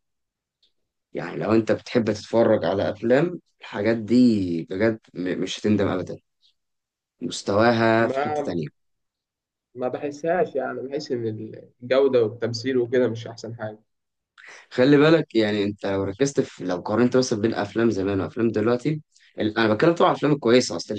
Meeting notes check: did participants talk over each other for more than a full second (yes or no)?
no